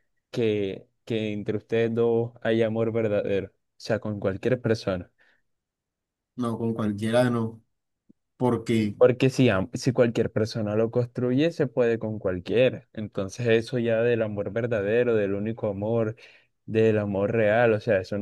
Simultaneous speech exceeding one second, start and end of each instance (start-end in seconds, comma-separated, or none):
none